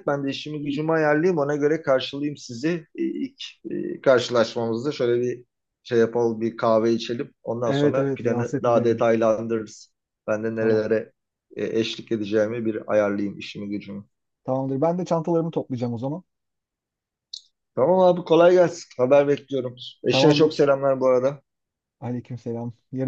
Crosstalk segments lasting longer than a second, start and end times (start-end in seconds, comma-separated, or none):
7.6-9.0